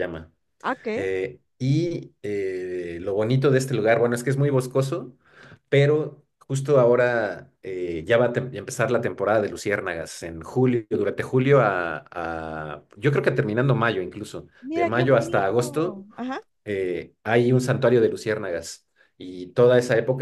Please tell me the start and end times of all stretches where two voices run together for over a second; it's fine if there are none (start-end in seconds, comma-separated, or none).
14.6-16.1